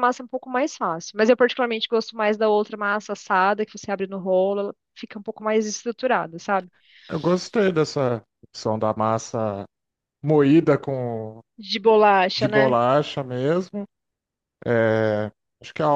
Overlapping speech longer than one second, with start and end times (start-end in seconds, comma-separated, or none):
none